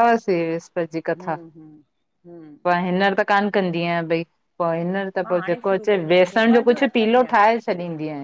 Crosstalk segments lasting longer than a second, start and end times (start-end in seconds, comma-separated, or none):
5.2-7.3